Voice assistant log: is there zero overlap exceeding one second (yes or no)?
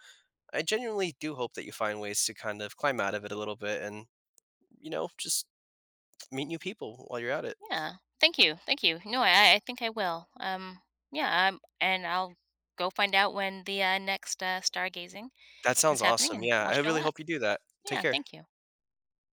no